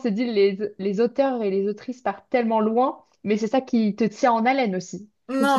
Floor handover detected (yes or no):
yes